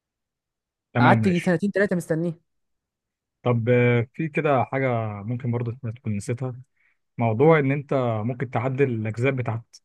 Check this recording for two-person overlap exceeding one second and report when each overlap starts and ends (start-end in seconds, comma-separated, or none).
none